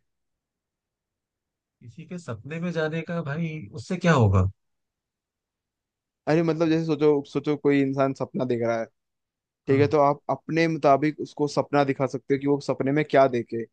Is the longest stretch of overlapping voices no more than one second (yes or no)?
yes